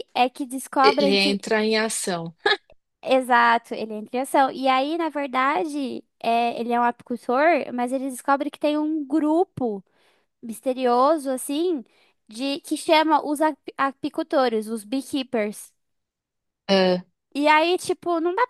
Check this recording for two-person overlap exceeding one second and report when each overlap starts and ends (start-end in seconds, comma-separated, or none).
none